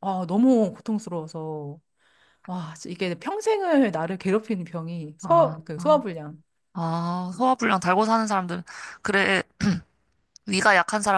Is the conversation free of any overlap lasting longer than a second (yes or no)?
yes